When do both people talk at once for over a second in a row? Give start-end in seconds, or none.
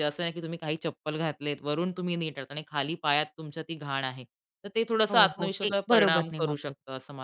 5.1-6.7